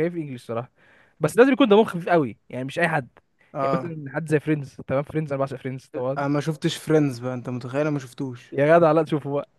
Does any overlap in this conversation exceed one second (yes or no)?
no